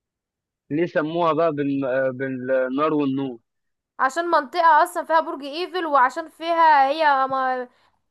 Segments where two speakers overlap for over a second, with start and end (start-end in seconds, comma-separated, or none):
none